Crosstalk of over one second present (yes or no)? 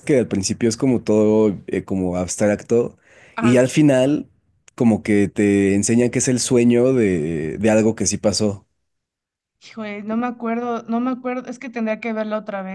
no